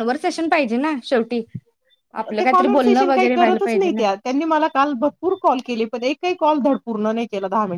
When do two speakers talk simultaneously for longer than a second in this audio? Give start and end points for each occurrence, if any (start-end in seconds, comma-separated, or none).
2.4-4.0